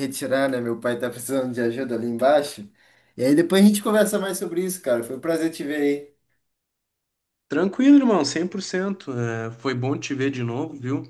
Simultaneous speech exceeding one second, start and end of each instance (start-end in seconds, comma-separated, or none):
none